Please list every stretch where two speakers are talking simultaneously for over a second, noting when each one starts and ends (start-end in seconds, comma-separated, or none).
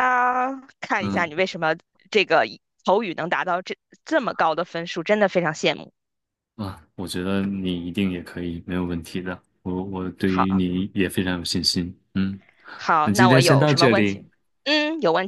13.0-14.2